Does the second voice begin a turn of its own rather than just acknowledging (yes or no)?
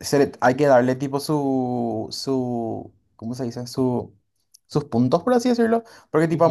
no